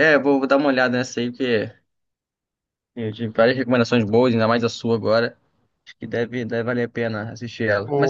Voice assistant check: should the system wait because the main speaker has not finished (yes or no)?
yes